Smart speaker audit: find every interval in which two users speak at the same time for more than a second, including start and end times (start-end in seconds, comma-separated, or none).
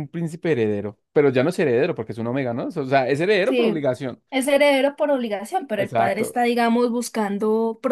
none